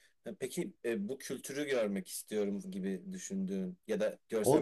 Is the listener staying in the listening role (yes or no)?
no